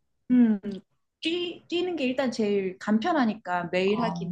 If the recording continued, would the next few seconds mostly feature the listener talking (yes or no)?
yes